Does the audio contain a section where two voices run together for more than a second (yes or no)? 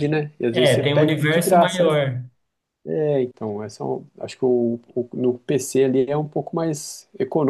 yes